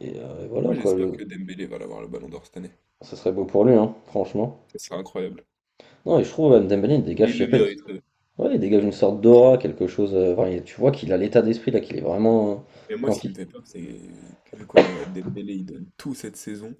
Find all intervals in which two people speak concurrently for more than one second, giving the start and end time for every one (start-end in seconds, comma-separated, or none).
none